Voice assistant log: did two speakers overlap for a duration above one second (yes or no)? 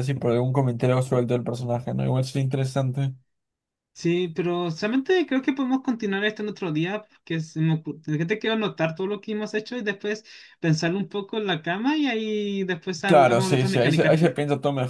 yes